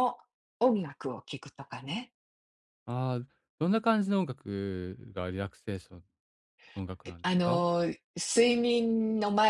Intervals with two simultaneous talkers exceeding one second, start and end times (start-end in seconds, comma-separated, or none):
none